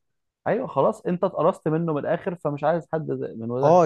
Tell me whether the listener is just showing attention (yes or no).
no